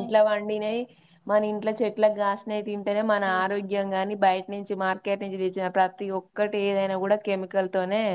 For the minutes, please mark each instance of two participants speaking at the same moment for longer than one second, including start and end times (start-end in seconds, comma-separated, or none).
2.1-3.8